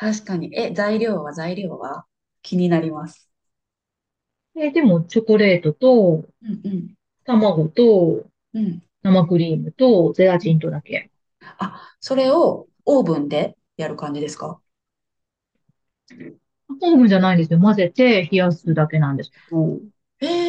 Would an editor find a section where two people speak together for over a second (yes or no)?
no